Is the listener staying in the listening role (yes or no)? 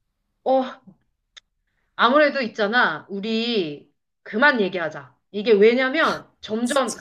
yes